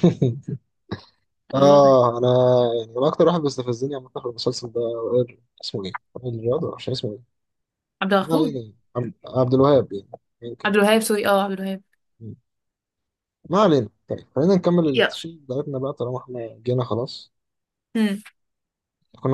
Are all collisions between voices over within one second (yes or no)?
yes